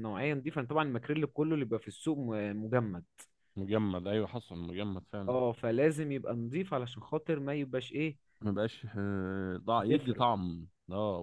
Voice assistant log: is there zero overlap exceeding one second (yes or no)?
yes